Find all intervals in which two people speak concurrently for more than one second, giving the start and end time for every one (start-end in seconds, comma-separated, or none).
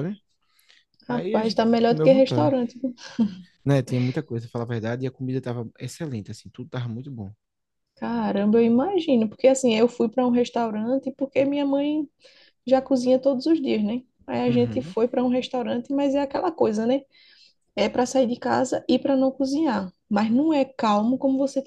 1.1-2.5